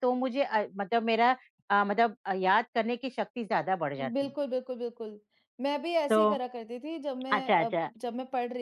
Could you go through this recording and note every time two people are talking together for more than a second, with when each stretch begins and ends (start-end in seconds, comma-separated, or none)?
none